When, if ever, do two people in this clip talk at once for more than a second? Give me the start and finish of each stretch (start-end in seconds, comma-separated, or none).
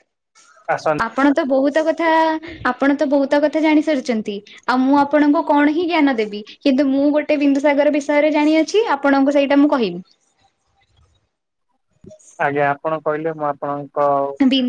none